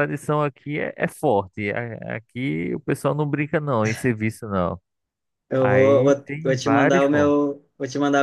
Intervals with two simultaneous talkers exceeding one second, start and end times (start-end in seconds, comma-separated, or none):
5.6-7.4